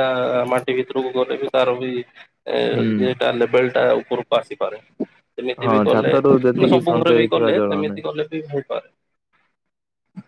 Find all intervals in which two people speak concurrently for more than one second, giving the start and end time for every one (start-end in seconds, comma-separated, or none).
5.7-8.0